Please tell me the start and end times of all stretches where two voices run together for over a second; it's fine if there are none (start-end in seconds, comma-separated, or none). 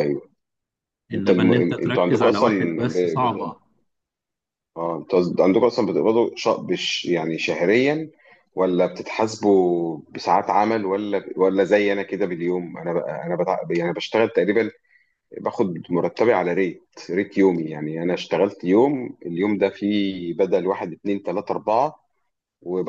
1.1-3.5